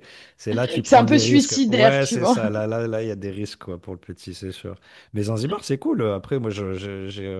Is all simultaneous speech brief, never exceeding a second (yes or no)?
no